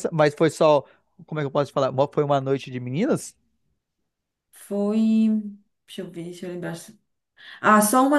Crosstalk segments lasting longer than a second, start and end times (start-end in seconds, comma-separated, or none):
none